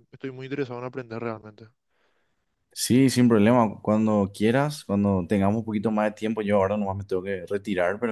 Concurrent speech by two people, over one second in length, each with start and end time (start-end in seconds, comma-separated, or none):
none